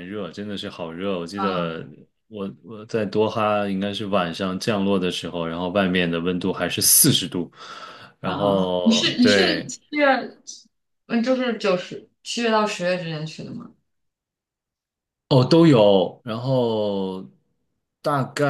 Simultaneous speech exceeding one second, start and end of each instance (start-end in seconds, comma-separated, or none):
8.2-9.7